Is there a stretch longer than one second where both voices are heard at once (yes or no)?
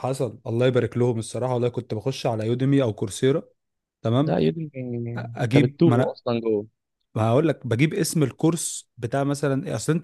no